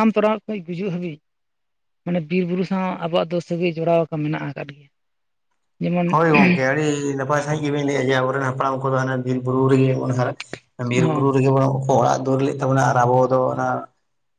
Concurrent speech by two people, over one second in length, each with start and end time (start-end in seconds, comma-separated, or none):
none